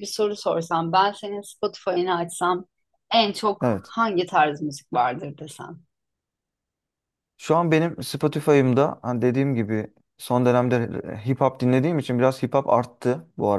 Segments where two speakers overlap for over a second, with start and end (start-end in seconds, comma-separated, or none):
none